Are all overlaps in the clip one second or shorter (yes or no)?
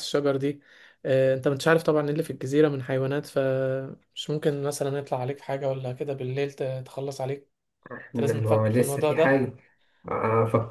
no